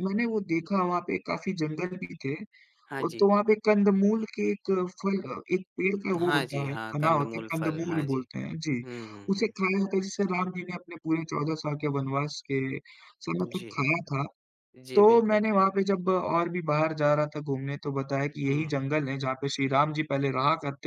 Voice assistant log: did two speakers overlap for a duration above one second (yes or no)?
yes